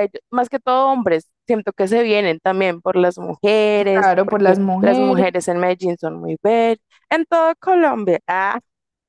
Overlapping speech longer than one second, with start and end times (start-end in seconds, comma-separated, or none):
3.7-5.3